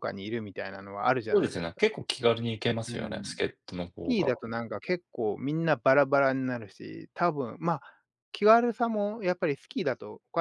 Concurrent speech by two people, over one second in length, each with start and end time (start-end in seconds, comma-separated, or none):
none